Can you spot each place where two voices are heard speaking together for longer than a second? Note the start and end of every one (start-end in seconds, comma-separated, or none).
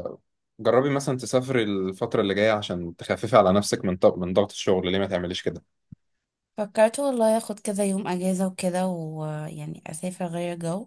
none